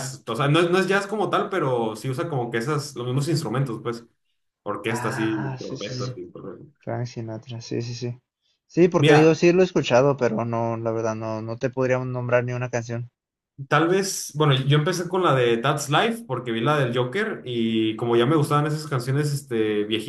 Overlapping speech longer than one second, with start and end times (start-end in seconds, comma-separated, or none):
4.9-6.2